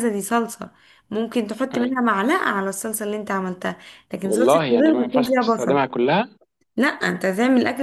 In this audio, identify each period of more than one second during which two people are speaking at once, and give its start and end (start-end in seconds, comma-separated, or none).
4.2-5.8